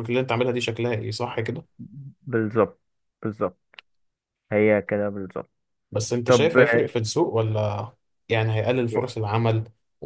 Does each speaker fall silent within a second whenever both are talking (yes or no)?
yes